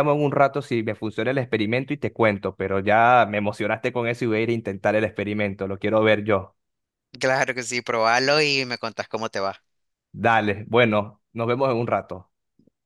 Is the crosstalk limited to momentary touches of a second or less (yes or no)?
yes